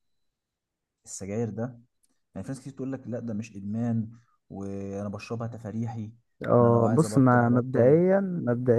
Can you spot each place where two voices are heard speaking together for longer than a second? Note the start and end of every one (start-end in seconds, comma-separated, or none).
6.5-8.0